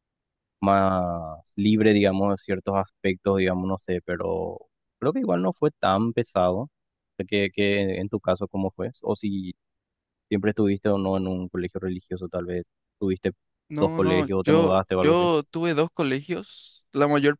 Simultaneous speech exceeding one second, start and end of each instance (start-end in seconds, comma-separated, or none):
13.8-15.3